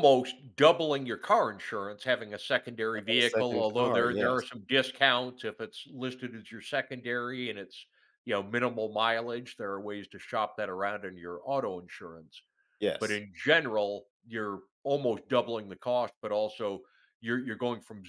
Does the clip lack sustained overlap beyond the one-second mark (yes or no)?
no